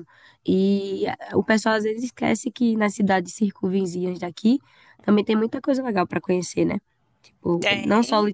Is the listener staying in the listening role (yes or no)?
yes